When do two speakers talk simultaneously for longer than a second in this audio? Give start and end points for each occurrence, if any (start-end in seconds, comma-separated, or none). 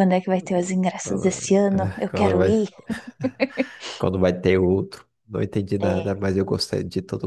1.0-2.5